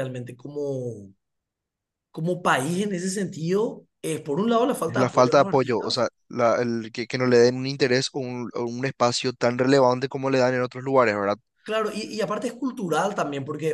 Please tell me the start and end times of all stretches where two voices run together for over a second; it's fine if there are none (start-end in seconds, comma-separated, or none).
4.8-6.0